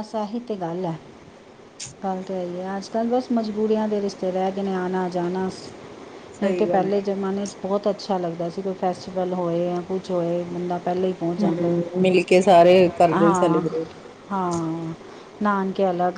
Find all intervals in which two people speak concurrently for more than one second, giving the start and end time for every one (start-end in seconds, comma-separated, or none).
none